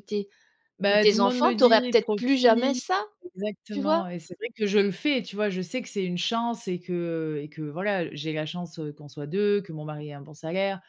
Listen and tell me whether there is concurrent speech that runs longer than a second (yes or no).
yes